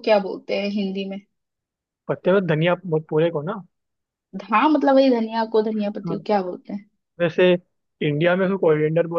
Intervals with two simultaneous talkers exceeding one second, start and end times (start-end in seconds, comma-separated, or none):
none